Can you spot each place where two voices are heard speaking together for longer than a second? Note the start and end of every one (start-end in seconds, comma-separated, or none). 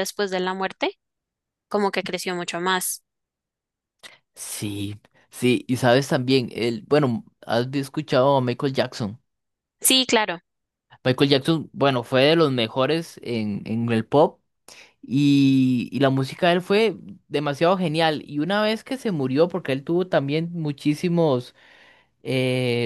none